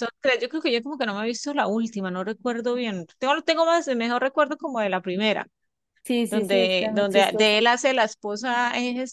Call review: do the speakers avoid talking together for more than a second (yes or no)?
no